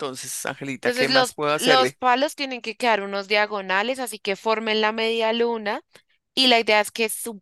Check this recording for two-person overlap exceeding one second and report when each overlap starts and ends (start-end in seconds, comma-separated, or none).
0.8-2.0